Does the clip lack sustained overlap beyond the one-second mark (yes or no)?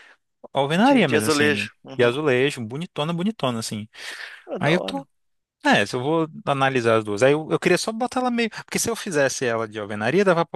no